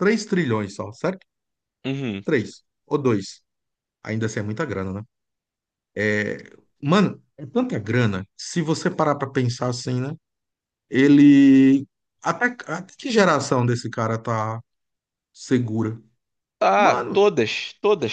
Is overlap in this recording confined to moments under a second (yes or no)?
yes